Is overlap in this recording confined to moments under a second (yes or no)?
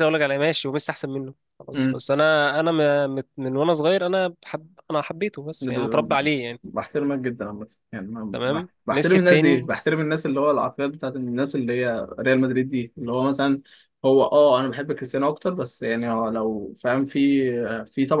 no